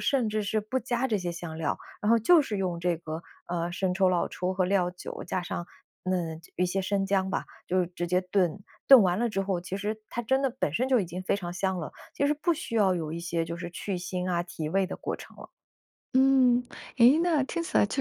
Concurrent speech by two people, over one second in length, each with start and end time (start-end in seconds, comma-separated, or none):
none